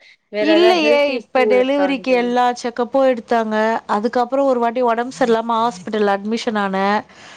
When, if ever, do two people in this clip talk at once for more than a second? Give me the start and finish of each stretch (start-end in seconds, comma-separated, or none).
0.5-2.2